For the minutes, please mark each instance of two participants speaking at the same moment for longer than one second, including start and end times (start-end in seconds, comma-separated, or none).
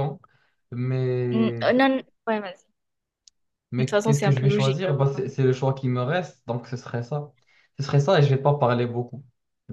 3.8-5.2